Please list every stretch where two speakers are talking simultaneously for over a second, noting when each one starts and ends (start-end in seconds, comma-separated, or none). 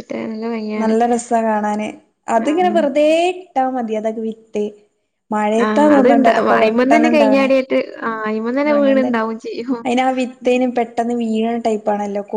5.6-7.5